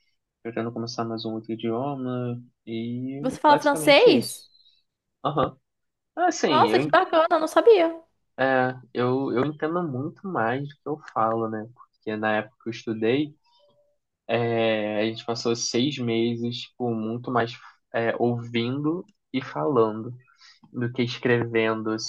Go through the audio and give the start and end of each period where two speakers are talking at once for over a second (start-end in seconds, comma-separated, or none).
3.2-4.5